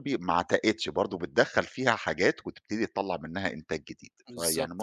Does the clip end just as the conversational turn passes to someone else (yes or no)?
yes